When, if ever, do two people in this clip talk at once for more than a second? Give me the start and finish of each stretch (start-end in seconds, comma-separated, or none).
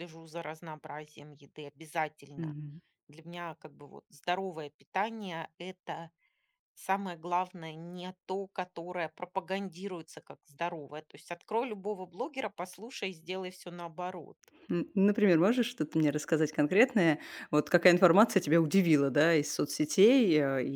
none